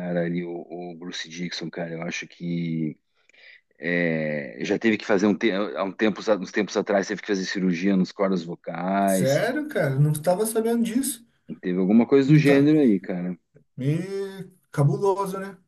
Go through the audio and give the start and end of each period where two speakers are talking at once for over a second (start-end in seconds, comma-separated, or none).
none